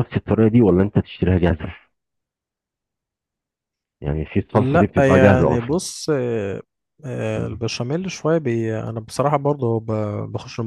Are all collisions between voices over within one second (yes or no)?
no